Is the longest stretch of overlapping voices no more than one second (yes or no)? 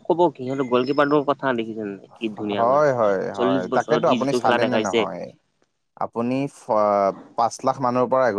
no